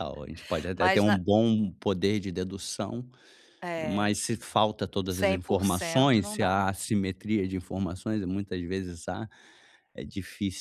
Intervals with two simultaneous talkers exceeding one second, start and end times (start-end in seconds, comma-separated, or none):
5.1-6.5